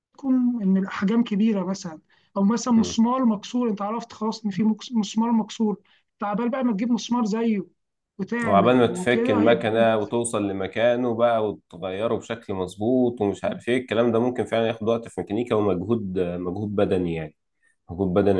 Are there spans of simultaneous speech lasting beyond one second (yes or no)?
yes